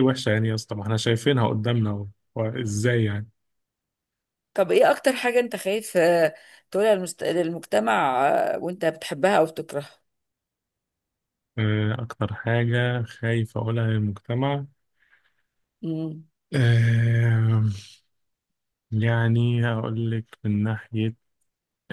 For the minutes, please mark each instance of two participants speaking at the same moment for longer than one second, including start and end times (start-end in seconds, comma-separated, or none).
none